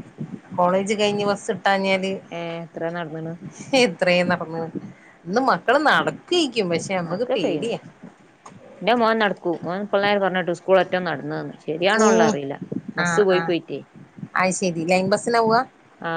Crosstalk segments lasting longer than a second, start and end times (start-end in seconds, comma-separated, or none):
none